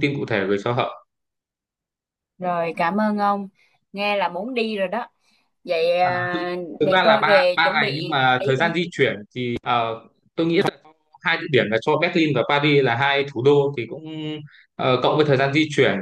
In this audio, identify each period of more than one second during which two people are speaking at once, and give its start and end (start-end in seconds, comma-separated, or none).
6.8-8.6